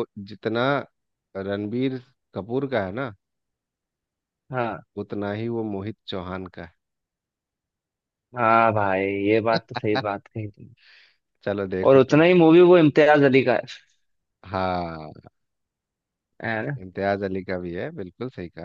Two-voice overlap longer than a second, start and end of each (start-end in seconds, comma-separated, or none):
none